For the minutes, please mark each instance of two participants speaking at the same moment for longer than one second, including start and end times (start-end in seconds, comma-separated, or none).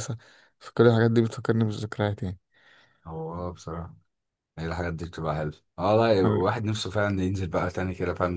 none